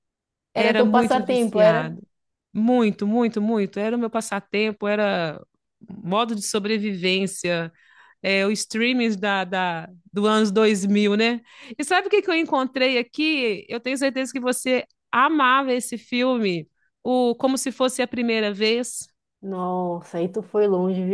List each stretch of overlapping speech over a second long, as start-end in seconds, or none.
0.6-1.9